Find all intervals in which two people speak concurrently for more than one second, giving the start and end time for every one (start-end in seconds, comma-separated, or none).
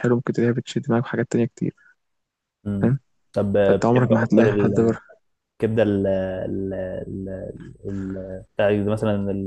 3.6-5.0